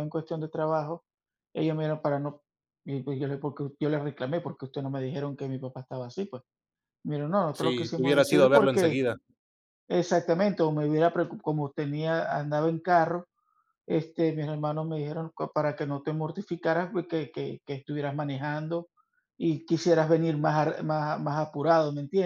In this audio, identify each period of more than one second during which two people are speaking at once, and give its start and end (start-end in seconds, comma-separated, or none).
7.5-9.1